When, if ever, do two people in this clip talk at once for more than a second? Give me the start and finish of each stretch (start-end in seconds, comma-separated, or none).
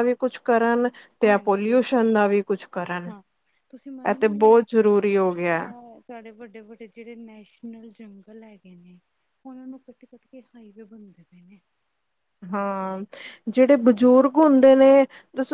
4.1-5.7